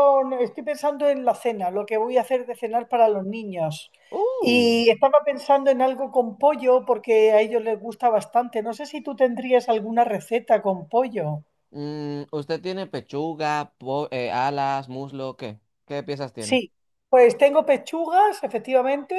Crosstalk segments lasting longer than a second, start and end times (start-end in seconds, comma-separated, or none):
none